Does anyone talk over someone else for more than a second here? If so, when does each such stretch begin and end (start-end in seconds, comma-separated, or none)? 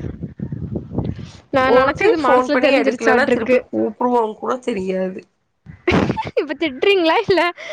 1.8-3.6